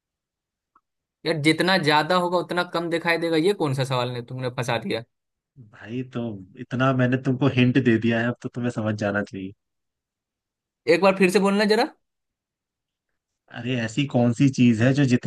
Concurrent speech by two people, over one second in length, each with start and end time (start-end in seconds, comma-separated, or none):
none